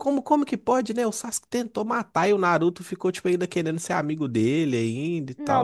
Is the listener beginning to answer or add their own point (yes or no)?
yes